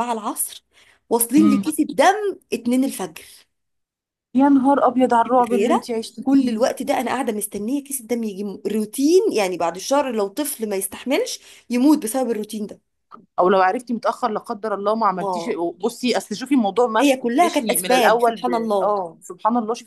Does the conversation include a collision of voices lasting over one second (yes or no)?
yes